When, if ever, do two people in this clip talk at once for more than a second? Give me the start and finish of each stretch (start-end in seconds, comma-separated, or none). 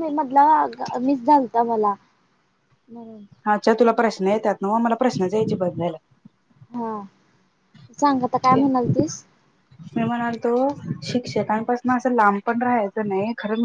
none